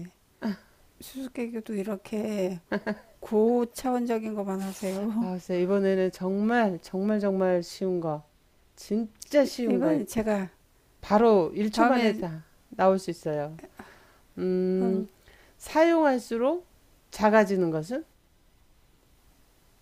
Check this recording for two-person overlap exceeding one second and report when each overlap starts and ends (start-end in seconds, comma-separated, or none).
none